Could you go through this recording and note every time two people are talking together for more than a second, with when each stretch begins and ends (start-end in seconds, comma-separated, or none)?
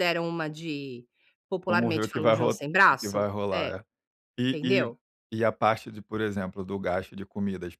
1.7-3.8